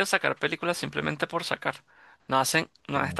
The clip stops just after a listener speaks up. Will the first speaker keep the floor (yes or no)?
yes